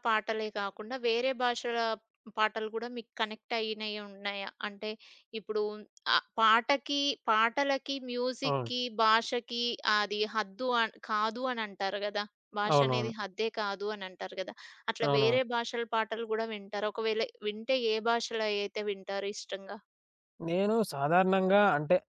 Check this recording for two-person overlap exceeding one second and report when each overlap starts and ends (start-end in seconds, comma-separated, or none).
none